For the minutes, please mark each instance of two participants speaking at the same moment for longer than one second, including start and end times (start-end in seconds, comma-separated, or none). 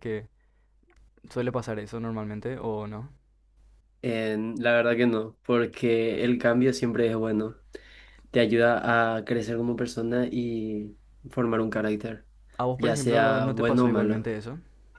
12.8-14.3